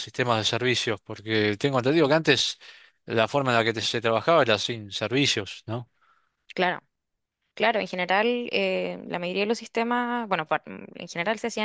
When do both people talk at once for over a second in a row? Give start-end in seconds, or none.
none